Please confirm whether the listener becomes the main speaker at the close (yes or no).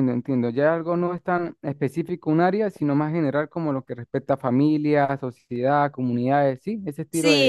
yes